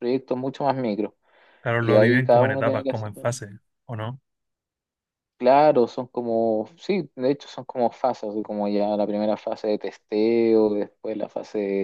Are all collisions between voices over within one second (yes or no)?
no